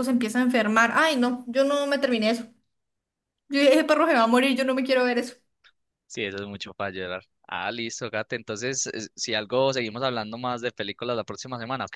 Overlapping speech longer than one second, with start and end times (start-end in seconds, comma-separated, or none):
none